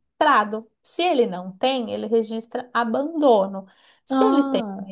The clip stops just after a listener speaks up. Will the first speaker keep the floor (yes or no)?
yes